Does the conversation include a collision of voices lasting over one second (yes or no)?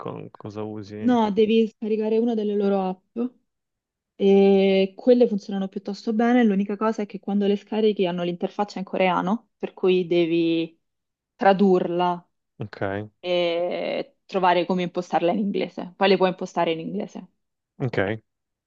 no